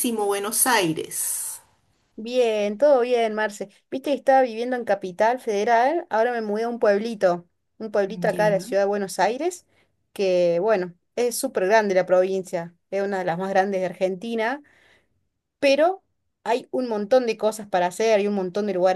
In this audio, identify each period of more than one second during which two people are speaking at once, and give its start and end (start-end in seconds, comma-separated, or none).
none